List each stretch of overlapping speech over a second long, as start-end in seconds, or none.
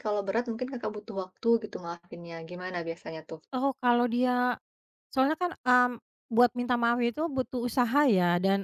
none